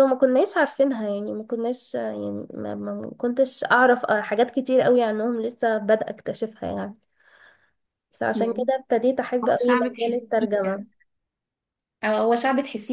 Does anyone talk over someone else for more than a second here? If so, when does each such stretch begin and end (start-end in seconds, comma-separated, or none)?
9.4-10.8